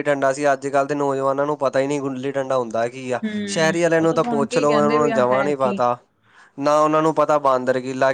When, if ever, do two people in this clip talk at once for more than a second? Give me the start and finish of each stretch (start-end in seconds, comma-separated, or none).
3.2-5.8